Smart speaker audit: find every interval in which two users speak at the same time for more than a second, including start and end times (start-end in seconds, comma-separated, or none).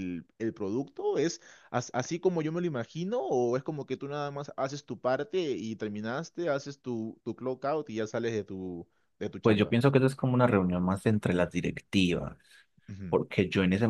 none